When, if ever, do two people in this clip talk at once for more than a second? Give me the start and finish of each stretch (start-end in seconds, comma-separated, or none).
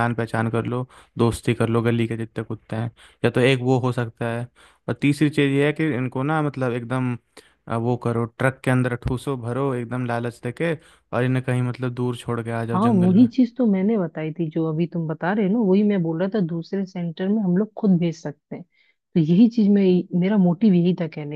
none